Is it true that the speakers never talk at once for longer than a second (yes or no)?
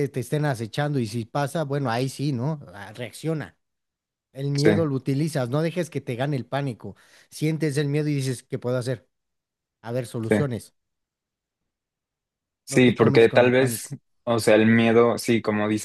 no